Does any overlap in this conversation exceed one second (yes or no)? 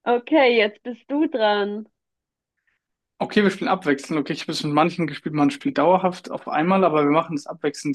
no